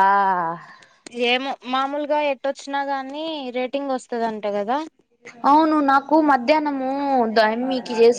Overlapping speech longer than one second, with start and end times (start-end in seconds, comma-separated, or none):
none